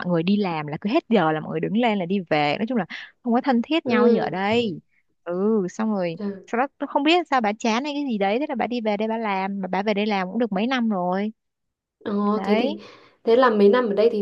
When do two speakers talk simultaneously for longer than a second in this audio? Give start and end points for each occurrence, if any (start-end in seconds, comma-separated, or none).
none